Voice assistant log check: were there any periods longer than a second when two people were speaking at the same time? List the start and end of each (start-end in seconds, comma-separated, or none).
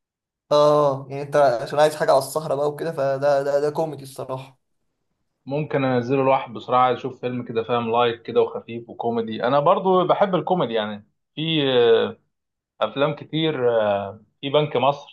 none